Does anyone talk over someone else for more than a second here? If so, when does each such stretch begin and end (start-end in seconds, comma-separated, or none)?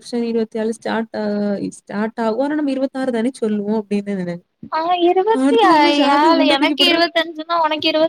none